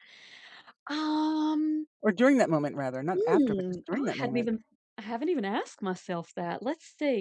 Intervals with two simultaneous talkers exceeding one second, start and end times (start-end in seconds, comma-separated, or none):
3.1-4.5